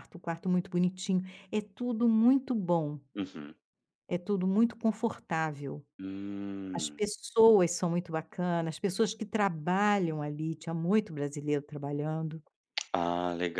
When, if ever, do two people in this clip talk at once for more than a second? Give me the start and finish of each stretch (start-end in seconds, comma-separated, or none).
none